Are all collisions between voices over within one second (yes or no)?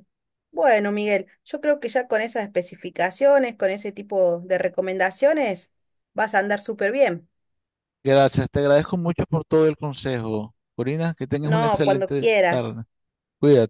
no